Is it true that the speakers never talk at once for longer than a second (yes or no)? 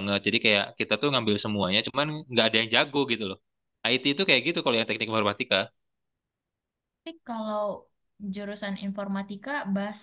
yes